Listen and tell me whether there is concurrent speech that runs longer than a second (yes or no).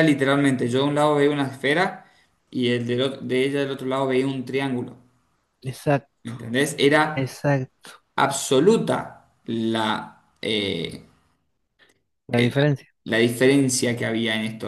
no